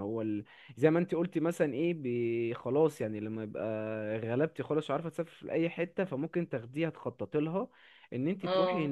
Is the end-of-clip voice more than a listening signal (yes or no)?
no